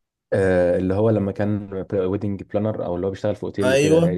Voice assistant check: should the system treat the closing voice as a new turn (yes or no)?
yes